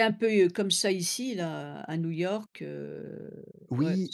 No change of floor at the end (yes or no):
no